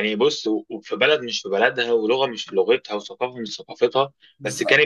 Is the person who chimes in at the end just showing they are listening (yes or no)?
yes